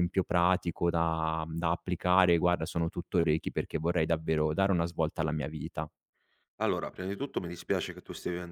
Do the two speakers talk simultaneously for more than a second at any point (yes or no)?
no